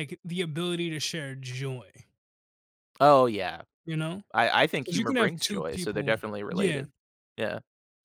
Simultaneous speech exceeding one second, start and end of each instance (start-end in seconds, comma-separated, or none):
4.8-6.9